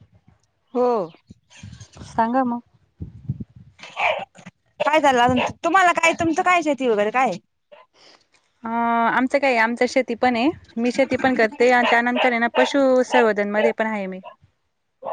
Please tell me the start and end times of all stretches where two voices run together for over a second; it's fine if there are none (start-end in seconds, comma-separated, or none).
none